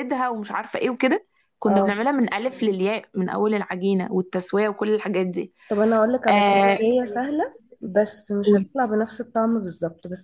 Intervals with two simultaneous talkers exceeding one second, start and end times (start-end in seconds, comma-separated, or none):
none